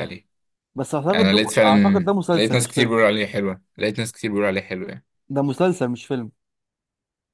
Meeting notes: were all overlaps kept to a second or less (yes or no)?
no